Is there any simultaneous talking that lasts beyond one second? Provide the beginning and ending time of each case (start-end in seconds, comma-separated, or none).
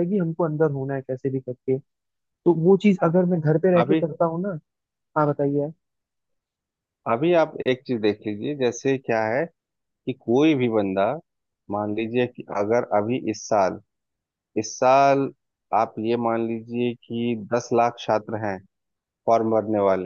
none